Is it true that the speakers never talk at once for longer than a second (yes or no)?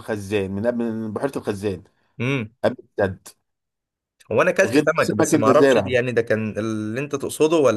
no